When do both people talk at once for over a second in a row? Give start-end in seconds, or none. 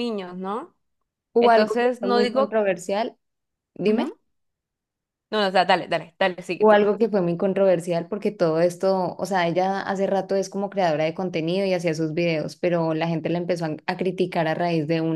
1.4-2.6